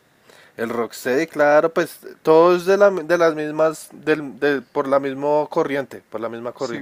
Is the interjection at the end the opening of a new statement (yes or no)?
yes